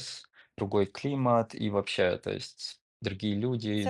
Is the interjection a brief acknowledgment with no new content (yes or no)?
no